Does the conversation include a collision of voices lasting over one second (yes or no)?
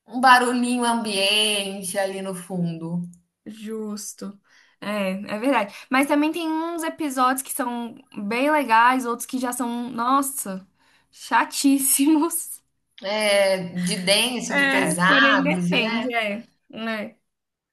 yes